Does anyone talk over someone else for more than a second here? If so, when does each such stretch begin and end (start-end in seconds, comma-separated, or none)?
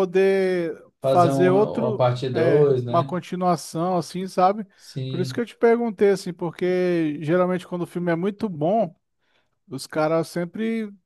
1.0-3.1